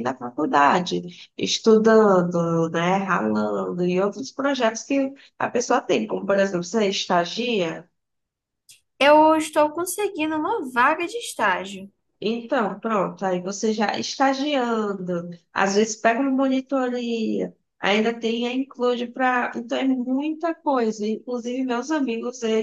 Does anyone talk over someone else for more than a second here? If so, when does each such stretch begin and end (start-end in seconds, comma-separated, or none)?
none